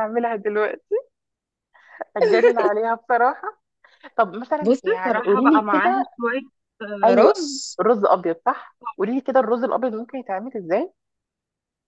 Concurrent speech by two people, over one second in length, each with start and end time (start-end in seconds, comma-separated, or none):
4.6-6.1